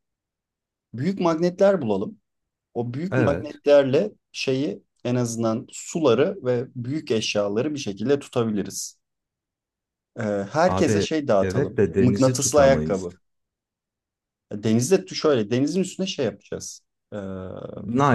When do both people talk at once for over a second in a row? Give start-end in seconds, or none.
10.7-13.1